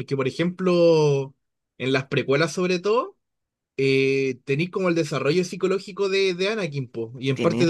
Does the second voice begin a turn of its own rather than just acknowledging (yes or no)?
no